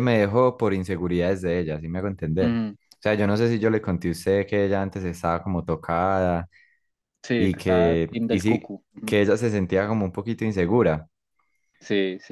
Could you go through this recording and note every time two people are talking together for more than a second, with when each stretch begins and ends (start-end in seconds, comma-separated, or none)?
7.4-9.2